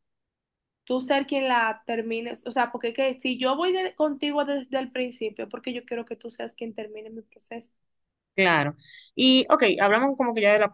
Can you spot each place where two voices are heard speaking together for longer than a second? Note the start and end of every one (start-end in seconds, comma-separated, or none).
none